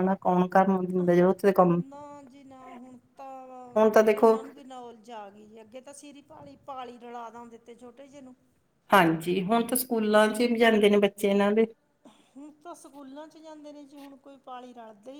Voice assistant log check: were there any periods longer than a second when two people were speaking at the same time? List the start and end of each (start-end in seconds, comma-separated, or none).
none